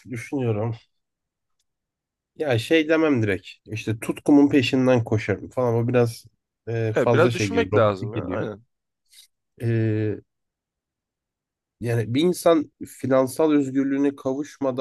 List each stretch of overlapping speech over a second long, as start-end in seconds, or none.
7.0-8.5